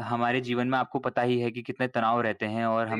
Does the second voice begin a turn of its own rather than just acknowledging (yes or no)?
no